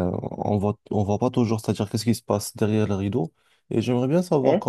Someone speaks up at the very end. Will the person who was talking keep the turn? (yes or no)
yes